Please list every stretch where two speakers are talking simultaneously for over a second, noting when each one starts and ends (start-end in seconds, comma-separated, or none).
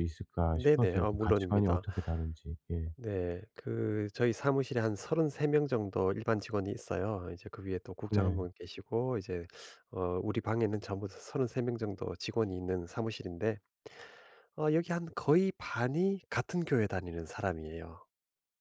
0.5-1.8